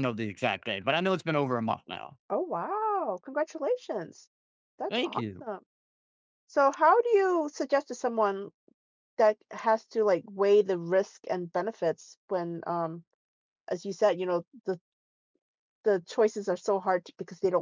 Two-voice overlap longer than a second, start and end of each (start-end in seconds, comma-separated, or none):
none